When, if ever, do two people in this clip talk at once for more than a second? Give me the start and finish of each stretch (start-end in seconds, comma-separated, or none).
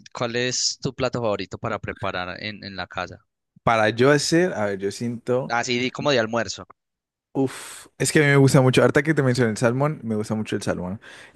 none